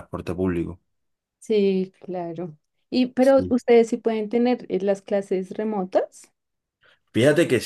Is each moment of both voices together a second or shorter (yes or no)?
yes